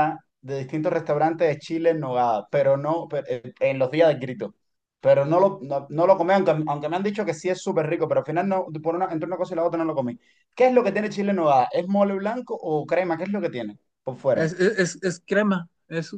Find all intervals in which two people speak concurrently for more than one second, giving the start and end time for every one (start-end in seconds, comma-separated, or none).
none